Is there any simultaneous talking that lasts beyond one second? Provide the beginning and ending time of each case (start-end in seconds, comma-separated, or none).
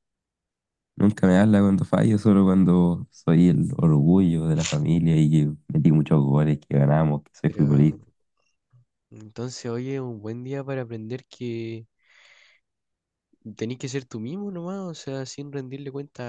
none